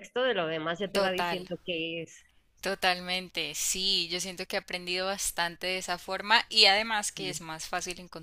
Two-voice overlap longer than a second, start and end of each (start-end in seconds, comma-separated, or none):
none